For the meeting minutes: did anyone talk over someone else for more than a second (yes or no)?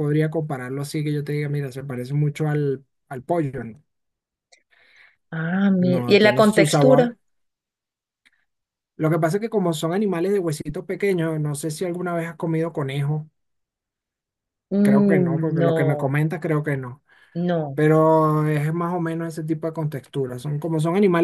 yes